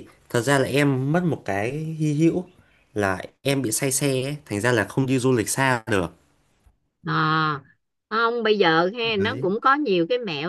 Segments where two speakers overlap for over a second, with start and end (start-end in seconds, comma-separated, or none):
none